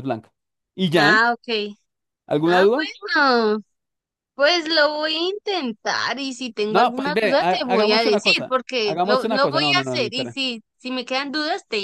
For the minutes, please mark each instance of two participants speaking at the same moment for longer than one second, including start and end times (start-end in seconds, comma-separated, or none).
6.7-10.4